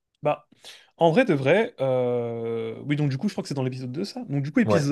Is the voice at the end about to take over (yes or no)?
no